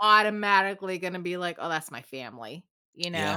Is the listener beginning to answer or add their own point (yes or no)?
yes